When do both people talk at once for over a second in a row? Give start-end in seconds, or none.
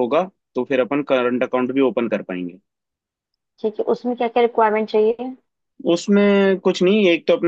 none